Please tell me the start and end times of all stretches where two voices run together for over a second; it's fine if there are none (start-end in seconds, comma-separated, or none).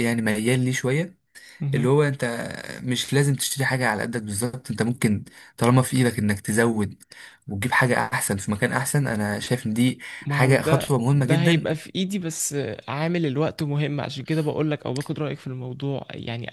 10.3-11.7